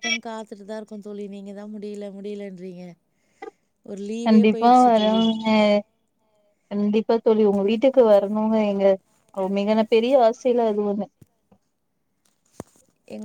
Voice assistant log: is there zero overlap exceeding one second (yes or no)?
yes